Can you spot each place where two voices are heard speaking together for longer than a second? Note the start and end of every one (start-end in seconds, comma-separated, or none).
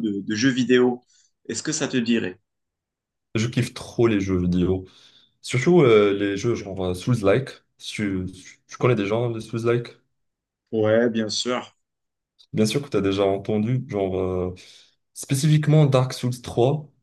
none